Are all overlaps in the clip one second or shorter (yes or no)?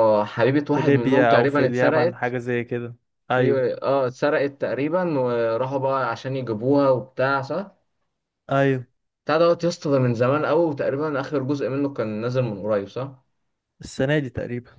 no